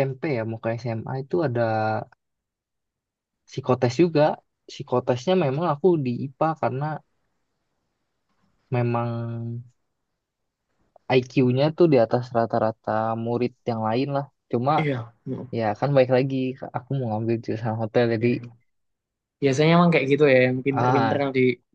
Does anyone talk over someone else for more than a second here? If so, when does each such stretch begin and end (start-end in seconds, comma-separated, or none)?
none